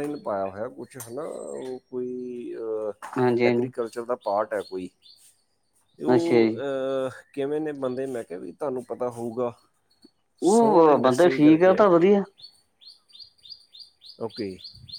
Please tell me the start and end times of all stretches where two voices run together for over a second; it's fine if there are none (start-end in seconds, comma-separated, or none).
10.5-12.1